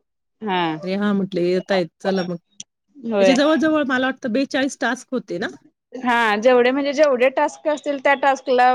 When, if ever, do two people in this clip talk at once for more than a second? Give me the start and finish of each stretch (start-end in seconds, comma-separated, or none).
none